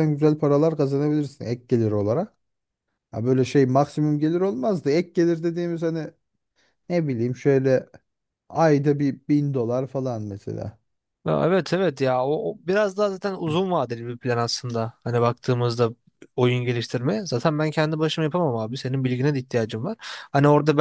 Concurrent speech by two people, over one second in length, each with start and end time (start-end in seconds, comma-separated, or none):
none